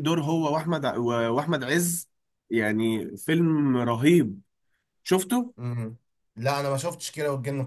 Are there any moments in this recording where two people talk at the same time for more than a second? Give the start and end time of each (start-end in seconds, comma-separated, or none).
none